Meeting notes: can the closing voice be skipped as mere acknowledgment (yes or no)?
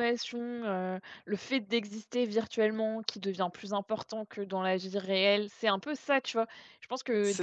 yes